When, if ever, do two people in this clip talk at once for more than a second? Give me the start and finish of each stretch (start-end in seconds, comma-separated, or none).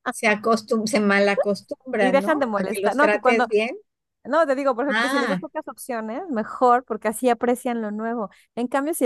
2.0-3.5